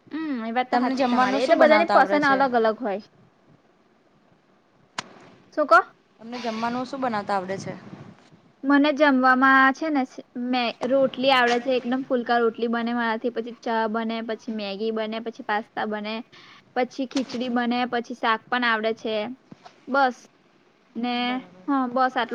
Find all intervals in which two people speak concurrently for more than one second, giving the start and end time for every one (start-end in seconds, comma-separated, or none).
0.7-2.4